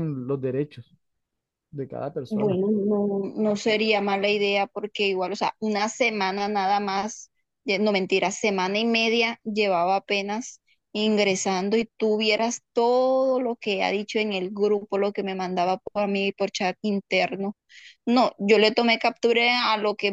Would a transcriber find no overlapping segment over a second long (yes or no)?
yes